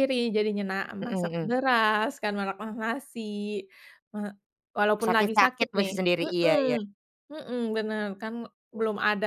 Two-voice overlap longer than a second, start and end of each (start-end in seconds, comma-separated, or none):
5.0-6.8